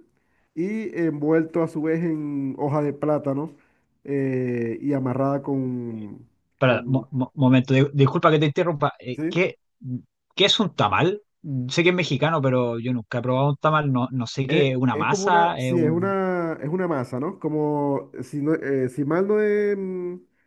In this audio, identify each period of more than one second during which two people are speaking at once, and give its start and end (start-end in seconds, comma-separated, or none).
14.5-16.1